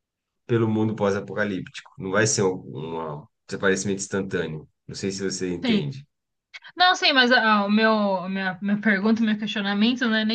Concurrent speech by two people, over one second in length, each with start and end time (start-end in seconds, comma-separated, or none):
none